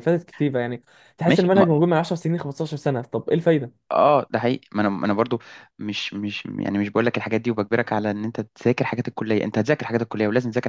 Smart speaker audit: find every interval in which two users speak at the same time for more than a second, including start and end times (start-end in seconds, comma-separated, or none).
none